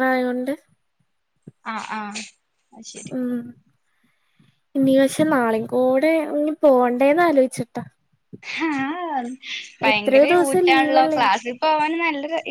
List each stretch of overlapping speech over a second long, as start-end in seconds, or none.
9.9-11.3